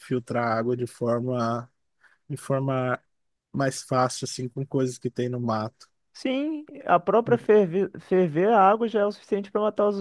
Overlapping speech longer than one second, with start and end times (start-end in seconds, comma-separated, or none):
none